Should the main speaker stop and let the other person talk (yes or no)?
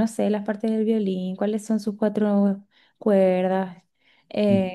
no